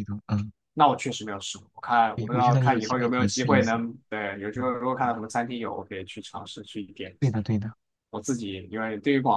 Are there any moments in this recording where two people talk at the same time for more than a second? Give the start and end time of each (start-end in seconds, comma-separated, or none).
2.1-3.8